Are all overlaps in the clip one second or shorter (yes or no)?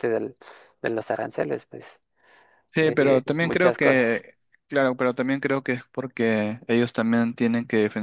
no